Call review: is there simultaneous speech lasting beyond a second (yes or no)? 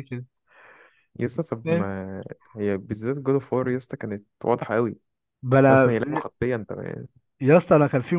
no